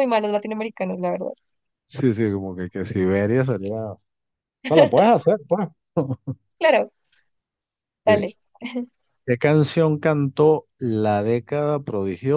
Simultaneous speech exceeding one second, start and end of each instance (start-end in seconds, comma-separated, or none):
none